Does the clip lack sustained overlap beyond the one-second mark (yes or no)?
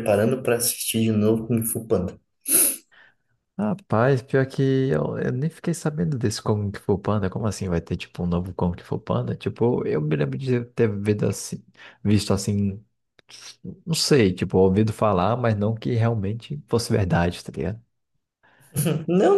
yes